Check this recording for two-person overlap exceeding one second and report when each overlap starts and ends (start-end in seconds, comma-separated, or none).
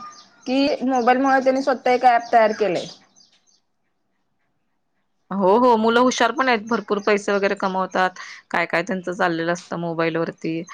none